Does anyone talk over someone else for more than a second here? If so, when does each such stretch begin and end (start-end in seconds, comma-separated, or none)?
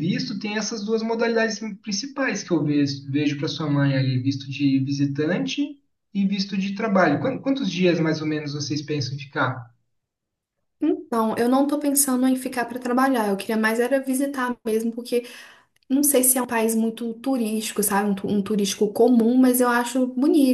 none